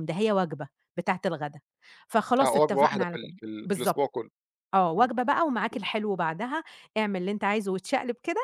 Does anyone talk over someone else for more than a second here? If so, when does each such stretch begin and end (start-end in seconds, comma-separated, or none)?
2.4-4.1